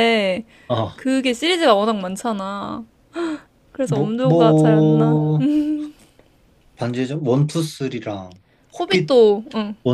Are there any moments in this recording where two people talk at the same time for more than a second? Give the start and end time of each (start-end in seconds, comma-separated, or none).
3.8-5.2